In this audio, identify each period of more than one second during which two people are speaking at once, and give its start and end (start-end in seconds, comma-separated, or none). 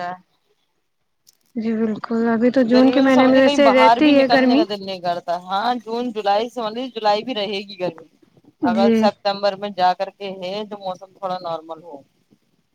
2.7-4.6